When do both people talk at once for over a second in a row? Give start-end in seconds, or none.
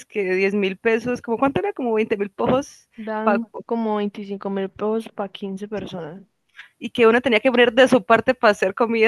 none